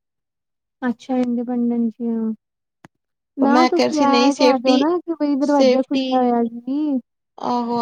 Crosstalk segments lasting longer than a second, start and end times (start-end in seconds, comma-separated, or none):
3.4-4.8